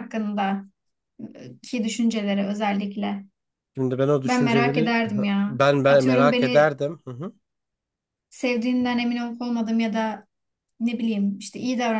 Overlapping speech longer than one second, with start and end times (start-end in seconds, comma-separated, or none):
4.2-6.8